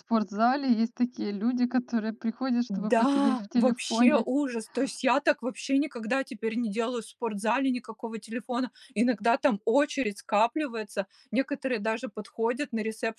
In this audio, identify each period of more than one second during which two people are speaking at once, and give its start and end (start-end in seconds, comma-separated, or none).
2.7-4.2